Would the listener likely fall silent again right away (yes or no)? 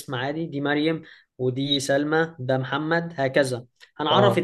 yes